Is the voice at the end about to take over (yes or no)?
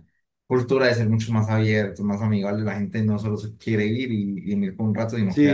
yes